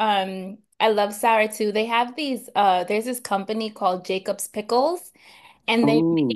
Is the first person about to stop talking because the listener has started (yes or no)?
no